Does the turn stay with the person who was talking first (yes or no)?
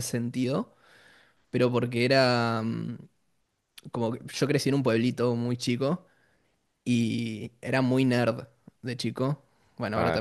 no